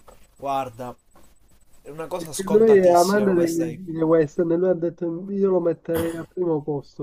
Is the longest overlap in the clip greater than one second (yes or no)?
yes